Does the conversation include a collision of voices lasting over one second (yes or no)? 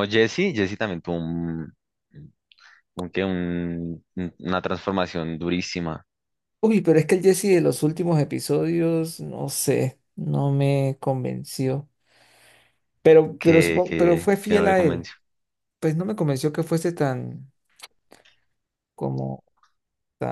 yes